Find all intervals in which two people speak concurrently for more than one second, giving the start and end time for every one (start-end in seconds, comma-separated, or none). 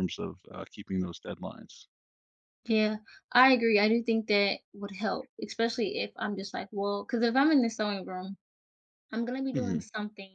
none